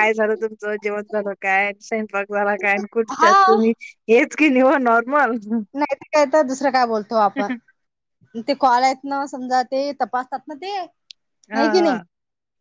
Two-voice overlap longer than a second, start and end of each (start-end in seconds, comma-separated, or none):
none